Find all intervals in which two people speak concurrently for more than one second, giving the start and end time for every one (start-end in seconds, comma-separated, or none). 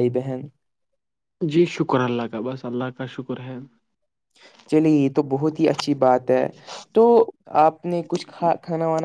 none